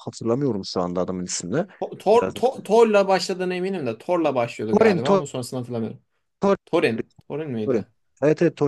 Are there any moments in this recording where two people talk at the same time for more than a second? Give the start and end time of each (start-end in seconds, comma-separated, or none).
none